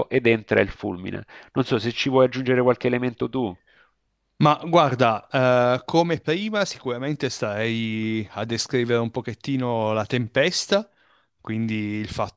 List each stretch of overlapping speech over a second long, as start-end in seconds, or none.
none